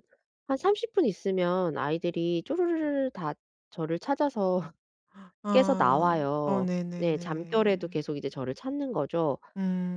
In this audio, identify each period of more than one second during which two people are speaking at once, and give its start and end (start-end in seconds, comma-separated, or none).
5.5-7.9